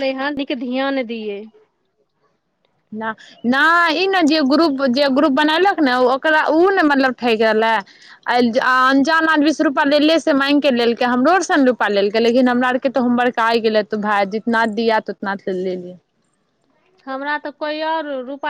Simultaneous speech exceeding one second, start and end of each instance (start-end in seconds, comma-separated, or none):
none